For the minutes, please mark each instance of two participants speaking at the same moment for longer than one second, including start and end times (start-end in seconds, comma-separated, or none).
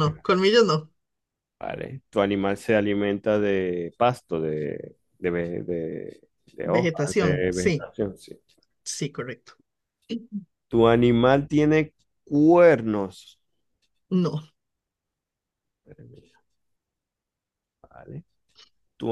6.6-7.9